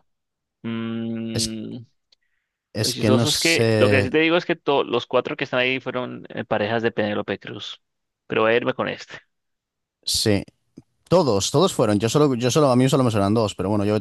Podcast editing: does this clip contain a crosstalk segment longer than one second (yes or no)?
yes